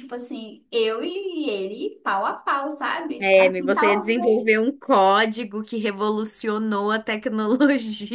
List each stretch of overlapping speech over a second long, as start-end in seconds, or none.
3.2-4.6